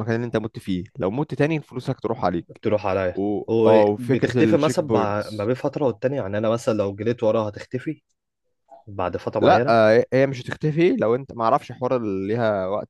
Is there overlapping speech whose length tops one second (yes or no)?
yes